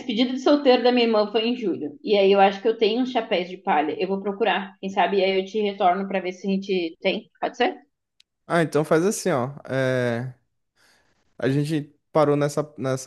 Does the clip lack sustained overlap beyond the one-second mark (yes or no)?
yes